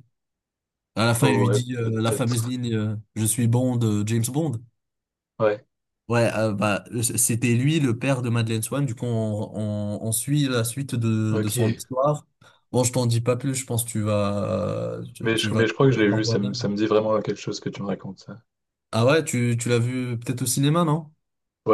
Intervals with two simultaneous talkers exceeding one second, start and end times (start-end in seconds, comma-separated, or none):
1.2-2.5, 15.2-16.6